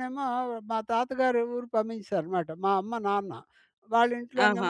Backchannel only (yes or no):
yes